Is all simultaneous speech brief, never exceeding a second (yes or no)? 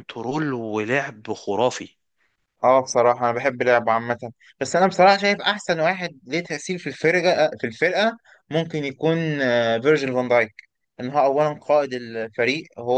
yes